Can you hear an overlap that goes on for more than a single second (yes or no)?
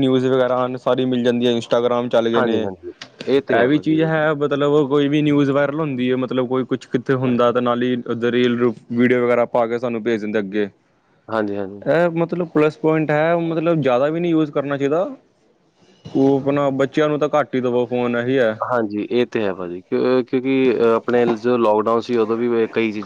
no